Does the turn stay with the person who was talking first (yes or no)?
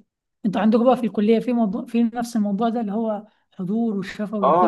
no